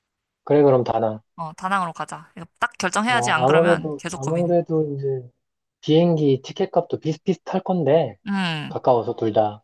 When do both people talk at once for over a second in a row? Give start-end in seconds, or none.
3.0-4.5